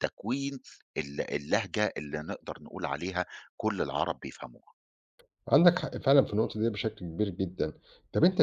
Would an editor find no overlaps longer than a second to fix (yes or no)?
yes